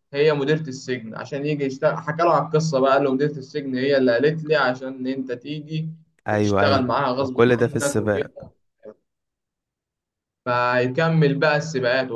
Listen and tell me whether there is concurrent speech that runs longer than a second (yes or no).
yes